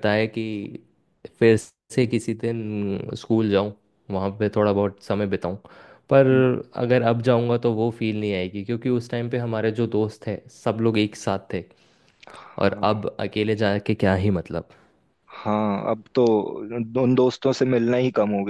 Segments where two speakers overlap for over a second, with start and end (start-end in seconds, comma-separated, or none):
none